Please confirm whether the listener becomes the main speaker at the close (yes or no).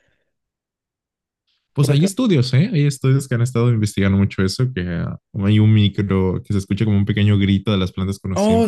yes